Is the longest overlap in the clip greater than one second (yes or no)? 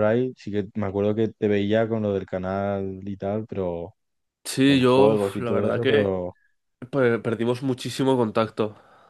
yes